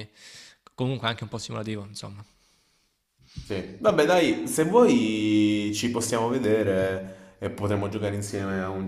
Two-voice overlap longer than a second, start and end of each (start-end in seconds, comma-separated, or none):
none